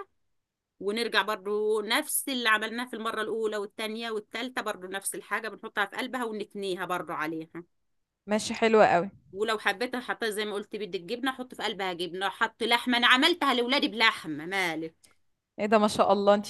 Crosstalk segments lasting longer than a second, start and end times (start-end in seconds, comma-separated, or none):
none